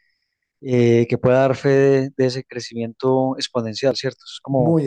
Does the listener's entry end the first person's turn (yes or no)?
yes